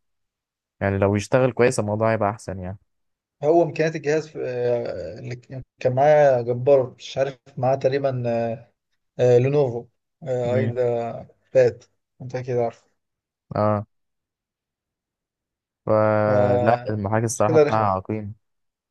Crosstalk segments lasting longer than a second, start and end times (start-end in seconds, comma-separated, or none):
16.2-17.9